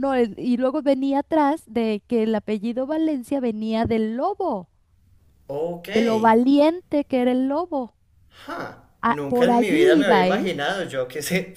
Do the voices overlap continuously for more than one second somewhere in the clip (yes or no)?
yes